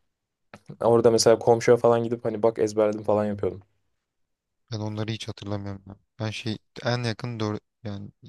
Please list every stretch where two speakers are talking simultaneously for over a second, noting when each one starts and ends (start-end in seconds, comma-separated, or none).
none